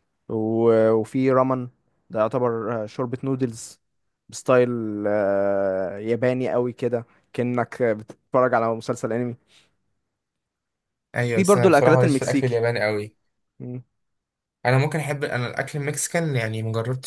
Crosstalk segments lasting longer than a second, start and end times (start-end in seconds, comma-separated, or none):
11.3-12.6